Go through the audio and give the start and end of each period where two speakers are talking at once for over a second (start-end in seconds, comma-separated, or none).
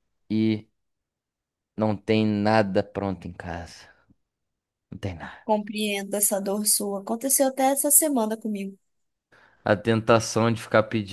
none